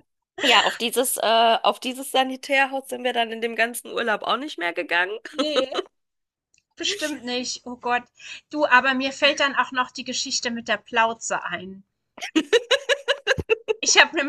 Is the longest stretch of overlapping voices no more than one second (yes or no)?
yes